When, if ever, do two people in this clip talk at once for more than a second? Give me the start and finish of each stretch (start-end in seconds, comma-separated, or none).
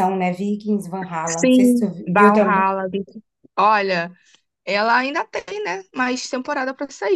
1.2-2.6